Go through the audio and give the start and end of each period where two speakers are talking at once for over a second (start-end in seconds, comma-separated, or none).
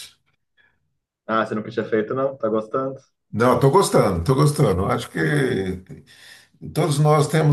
none